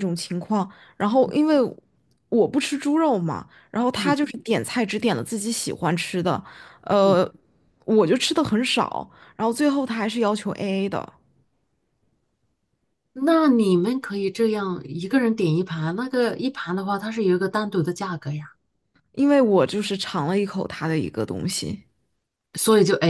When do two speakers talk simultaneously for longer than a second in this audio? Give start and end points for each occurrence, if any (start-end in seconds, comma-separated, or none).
none